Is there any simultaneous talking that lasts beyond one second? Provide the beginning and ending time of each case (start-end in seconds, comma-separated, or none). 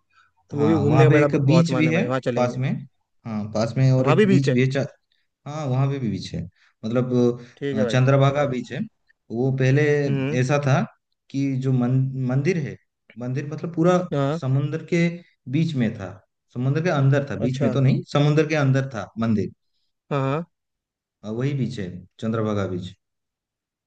0.6-2.6